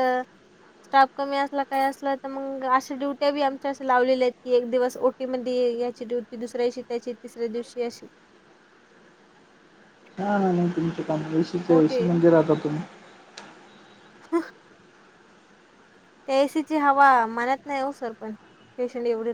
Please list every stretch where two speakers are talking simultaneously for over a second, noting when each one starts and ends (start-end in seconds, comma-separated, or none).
none